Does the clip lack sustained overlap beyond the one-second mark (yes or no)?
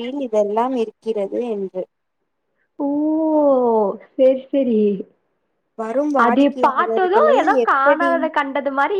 no